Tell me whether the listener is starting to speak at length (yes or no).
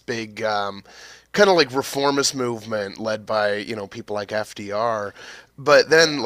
no